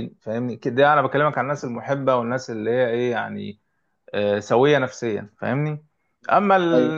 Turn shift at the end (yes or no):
no